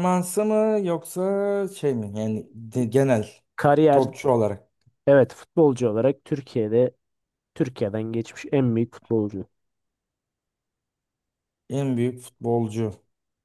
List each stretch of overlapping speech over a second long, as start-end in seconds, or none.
none